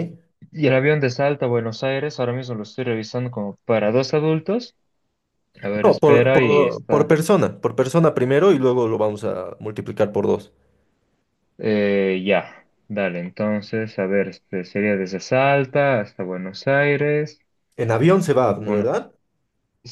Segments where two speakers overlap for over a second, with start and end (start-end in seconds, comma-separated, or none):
5.8-7.1